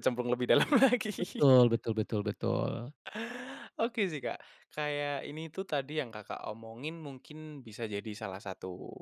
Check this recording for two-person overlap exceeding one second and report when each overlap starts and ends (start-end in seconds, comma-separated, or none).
none